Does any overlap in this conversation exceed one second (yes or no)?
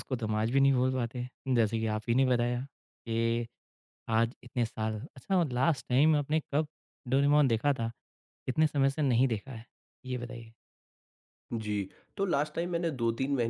no